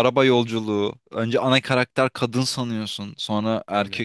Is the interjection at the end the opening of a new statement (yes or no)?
no